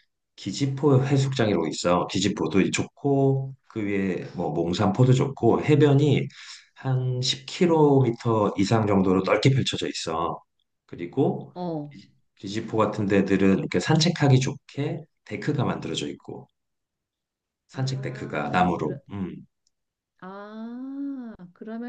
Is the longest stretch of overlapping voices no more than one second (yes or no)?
no